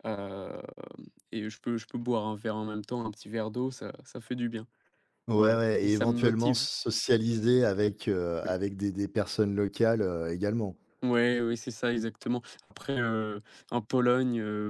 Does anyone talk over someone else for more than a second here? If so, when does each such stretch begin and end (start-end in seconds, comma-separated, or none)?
5.4-6.6